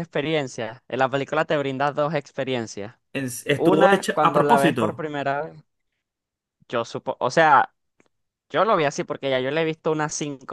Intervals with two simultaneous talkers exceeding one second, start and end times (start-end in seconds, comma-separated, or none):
3.5-5.0